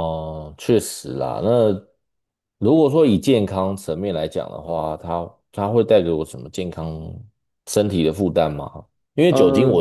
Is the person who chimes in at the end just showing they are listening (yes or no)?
yes